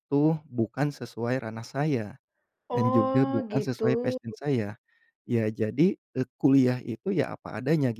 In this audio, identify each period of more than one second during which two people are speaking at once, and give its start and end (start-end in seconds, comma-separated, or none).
2.7-4.2